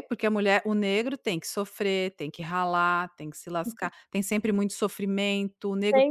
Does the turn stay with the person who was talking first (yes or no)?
no